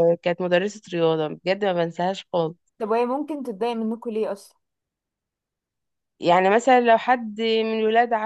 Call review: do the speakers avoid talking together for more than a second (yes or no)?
yes